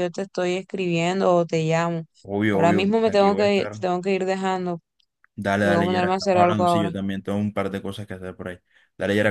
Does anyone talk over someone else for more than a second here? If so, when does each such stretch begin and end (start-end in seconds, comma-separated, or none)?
2.5-3.8, 5.6-6.9